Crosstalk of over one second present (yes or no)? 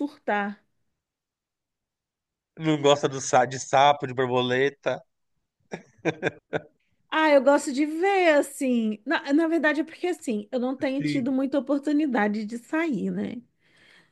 no